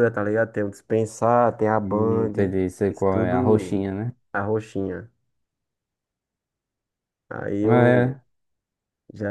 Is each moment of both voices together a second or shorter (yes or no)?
no